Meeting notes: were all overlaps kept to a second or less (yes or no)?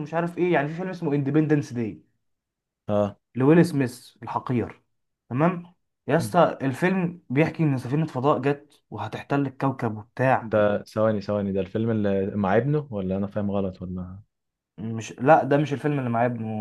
yes